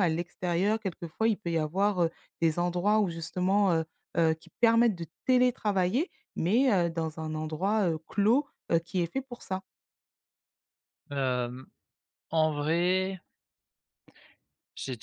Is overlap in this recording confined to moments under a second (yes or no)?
yes